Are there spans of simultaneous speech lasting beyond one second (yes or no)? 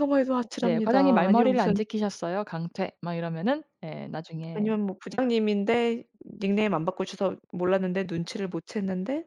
yes